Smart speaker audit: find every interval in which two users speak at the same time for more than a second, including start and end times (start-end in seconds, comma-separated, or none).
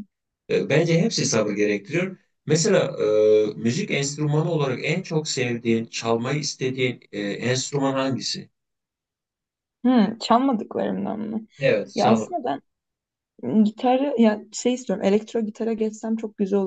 none